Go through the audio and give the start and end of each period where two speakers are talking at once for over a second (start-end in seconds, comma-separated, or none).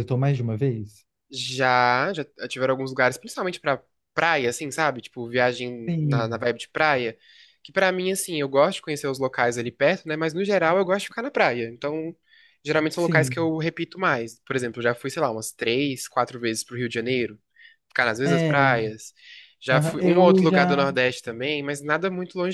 19.7-20.9